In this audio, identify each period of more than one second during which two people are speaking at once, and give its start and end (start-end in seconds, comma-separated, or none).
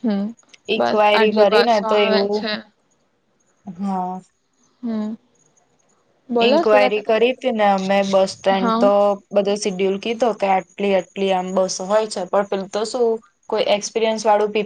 0.8-2.5